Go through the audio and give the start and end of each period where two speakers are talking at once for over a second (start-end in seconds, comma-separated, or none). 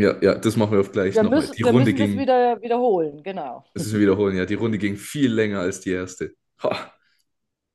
1.1-2.3